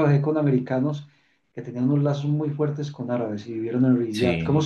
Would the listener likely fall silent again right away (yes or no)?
yes